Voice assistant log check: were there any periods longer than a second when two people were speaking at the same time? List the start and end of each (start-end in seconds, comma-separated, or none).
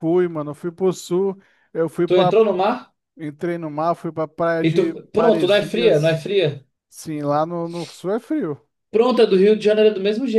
4.7-6.2